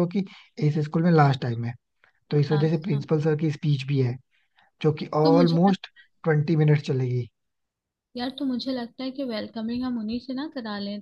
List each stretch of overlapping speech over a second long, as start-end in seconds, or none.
none